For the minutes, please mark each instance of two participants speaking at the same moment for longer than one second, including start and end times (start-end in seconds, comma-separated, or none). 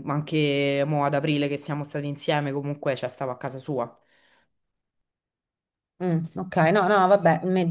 none